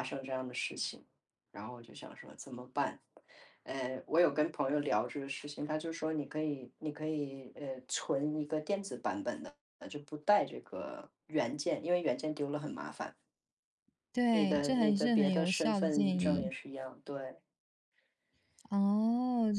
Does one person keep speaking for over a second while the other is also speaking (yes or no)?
yes